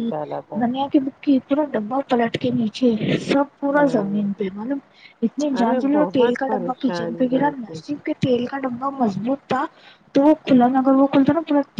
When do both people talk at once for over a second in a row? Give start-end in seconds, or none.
5.6-7.8